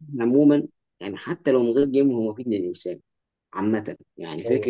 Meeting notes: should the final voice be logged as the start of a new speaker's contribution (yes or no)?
no